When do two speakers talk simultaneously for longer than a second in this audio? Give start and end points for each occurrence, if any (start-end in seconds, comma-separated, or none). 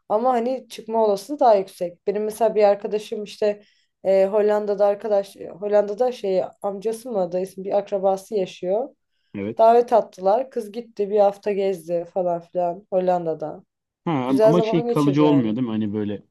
14.2-15.6